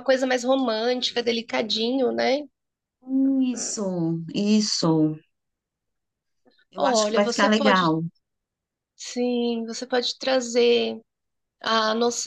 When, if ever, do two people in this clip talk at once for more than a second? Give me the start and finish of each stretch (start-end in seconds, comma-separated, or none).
6.8-8.0